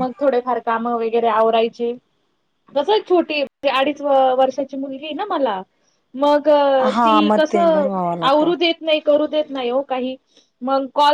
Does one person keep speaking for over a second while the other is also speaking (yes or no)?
yes